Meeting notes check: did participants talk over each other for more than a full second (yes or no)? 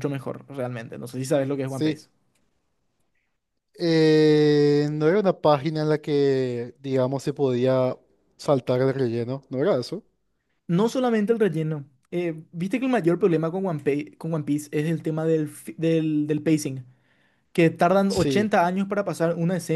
no